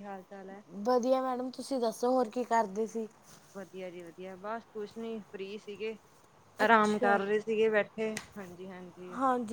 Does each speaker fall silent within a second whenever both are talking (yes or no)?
yes